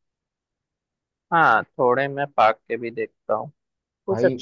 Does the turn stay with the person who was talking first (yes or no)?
yes